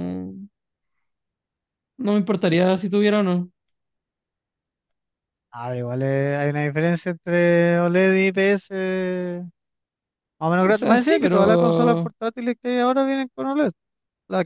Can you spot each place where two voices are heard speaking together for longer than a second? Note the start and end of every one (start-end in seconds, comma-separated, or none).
10.6-12.1